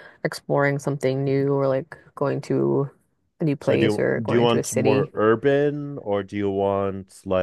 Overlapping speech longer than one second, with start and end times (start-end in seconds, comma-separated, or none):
3.6-5.1